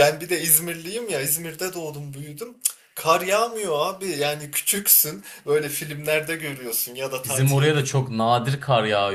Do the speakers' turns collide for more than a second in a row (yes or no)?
no